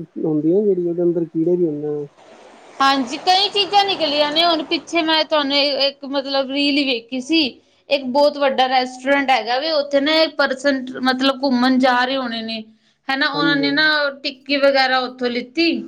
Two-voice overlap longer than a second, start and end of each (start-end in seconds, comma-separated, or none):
none